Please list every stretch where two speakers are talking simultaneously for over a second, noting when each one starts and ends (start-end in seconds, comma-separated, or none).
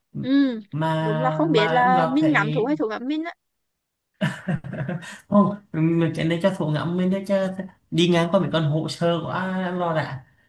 1.0-2.7